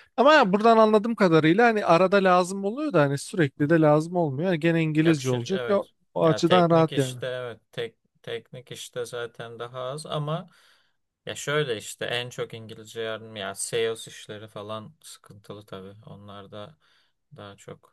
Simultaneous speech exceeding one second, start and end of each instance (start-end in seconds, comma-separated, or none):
5.0-7.2